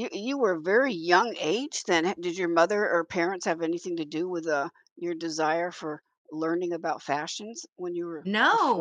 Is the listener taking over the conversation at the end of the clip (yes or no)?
yes